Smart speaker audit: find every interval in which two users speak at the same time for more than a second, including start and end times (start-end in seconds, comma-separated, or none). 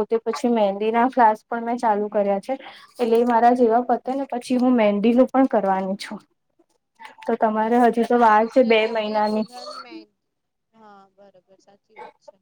7.7-9.4